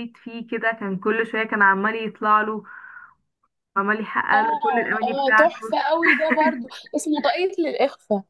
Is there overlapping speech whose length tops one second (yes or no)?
yes